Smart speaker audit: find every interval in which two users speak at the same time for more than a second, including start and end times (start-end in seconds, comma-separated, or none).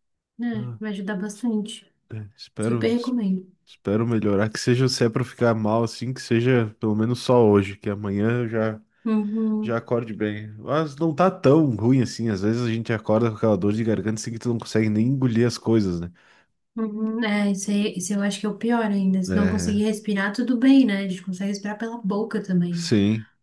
none